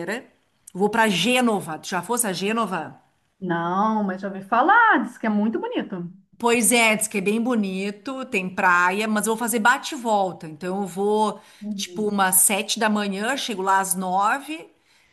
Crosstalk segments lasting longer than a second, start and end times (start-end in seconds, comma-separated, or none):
none